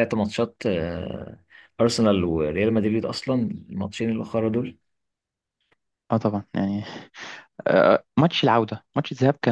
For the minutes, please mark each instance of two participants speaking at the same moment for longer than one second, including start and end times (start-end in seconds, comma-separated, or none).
none